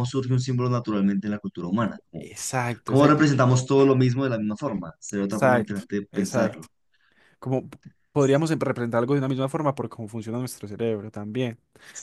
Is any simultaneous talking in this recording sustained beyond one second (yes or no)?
yes